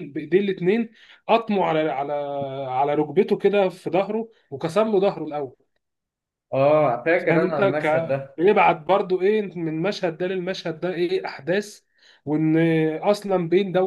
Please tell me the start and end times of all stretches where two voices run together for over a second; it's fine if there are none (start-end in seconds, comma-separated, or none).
7.2-8.4